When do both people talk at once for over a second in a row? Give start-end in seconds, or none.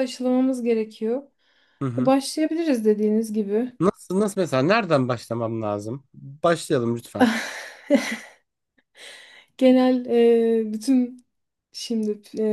none